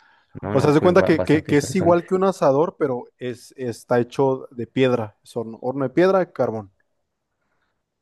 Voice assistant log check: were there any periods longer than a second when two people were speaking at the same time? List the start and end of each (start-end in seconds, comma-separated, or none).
0.5-2.0